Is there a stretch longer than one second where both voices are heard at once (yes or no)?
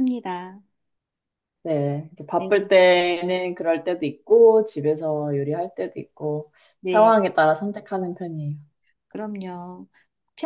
no